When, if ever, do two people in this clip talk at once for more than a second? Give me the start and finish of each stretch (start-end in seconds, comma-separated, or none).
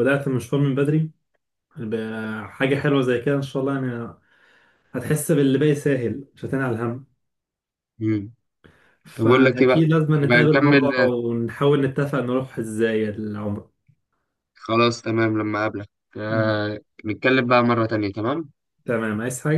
9.1-11.1